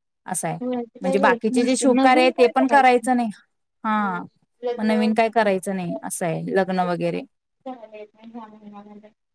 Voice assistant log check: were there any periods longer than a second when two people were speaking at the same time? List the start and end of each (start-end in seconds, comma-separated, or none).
1.0-2.5